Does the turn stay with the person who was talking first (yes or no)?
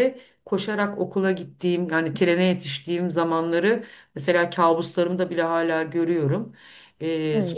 yes